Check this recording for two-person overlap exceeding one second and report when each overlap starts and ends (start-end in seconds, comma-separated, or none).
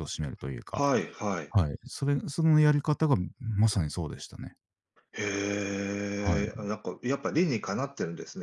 none